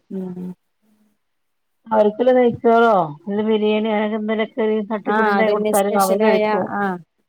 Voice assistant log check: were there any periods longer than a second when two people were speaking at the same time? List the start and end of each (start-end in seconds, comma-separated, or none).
none